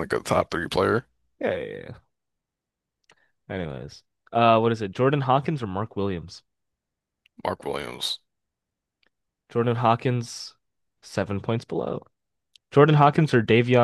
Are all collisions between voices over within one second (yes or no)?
yes